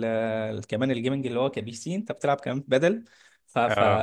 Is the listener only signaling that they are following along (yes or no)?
yes